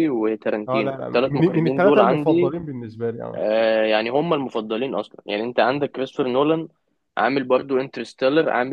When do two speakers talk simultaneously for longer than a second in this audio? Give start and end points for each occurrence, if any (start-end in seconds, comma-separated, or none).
0.7-2.5